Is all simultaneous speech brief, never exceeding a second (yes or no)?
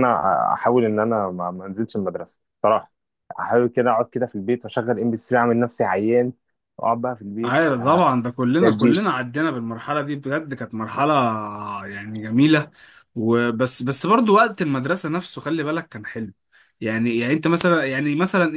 yes